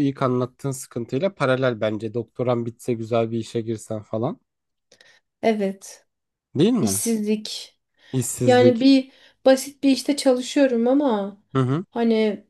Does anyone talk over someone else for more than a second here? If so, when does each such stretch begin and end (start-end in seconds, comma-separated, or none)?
none